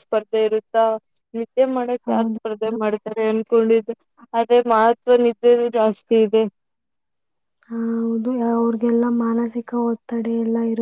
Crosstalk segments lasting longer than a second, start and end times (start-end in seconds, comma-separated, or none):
none